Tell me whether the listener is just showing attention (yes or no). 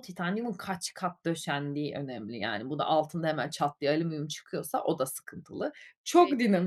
yes